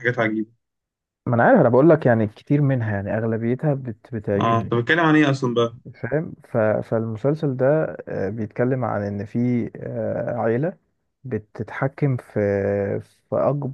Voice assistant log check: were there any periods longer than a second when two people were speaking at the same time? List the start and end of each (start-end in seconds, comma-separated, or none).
none